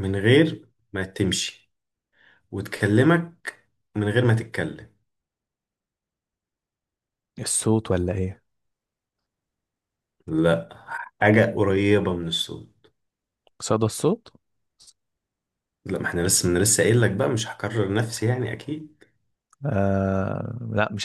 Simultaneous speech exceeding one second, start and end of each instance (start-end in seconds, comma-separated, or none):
none